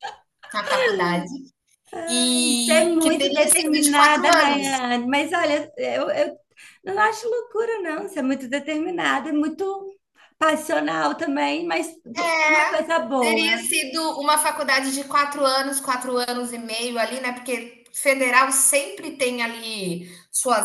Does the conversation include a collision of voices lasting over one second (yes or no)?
yes